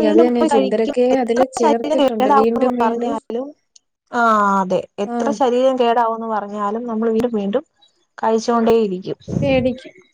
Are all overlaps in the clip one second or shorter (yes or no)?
no